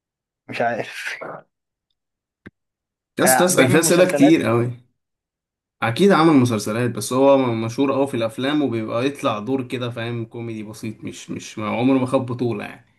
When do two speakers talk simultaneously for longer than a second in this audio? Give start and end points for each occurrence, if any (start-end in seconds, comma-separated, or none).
3.2-4.5